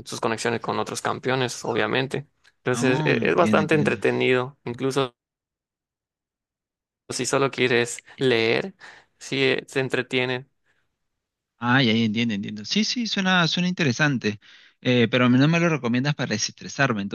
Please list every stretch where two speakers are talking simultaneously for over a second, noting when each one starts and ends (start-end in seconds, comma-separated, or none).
2.7-4.0